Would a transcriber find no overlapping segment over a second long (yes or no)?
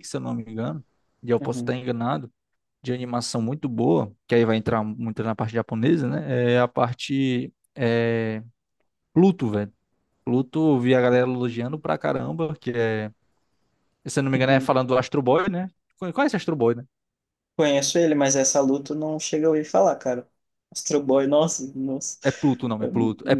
yes